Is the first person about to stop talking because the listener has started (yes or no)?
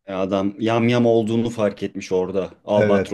yes